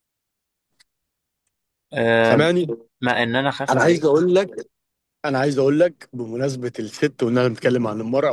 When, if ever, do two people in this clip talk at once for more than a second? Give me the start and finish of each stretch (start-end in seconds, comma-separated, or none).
none